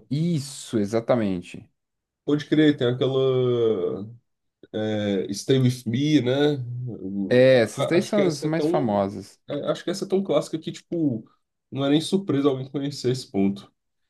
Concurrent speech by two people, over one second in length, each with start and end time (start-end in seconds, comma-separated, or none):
7.3-9.1